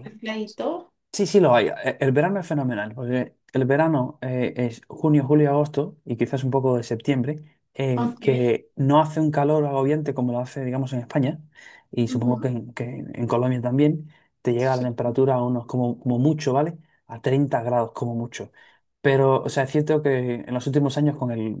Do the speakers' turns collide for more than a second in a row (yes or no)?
no